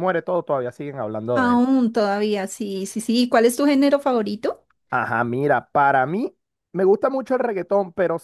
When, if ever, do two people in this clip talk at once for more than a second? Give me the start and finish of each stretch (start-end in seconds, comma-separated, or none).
none